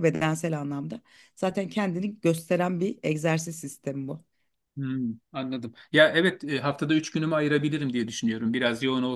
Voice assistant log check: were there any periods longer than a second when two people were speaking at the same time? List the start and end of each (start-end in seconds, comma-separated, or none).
none